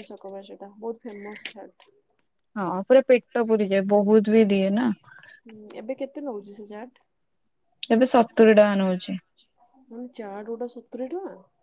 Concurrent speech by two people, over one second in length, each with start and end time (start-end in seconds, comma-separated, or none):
none